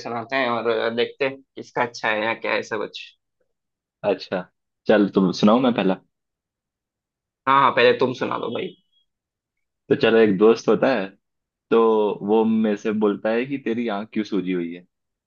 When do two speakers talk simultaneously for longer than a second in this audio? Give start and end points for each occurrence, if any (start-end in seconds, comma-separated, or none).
none